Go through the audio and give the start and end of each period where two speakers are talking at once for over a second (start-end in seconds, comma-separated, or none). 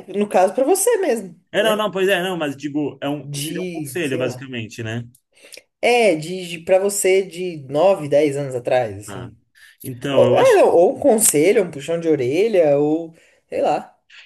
3.2-4.5